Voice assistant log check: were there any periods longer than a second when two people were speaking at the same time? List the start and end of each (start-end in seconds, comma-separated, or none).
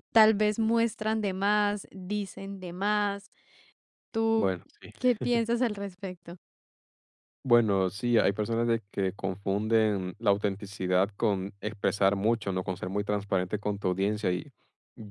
none